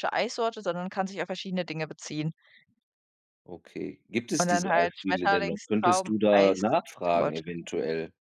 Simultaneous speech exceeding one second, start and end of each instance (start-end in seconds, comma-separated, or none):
4.4-7.5